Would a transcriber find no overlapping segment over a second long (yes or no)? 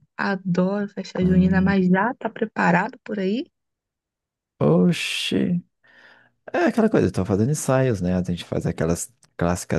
yes